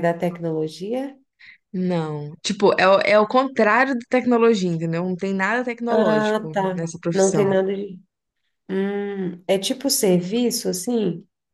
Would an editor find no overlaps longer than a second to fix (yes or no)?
no